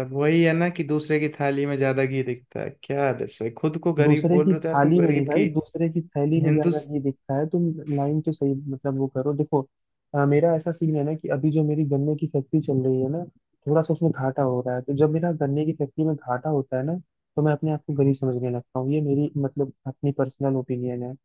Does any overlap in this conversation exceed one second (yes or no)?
yes